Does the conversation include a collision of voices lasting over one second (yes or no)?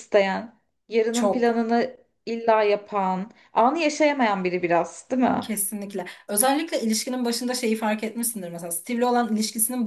no